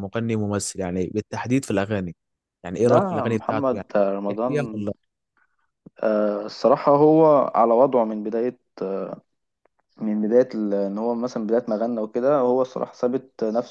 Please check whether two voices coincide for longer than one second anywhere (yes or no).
yes